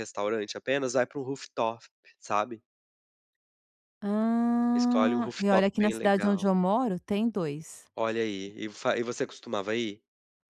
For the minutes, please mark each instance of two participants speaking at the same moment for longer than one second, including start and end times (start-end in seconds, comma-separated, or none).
4.7-6.4